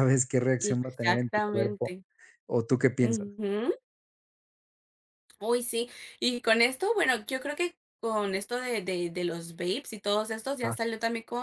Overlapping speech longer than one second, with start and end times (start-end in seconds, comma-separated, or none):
0.6-1.9